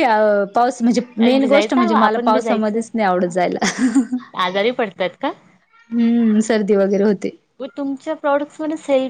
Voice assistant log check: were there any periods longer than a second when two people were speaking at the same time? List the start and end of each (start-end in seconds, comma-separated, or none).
1.4-2.8